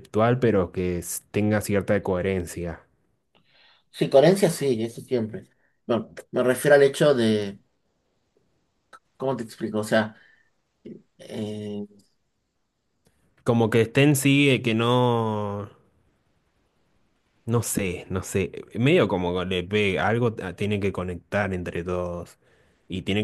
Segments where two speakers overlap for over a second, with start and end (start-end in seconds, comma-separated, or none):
none